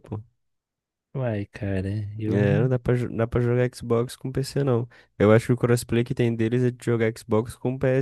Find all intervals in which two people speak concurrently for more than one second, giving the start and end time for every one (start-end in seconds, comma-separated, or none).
none